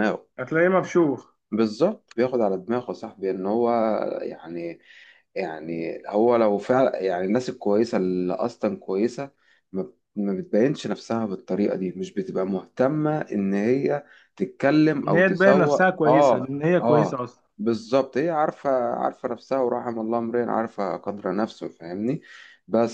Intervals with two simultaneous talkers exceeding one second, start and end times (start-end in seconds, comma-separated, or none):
15.0-17.2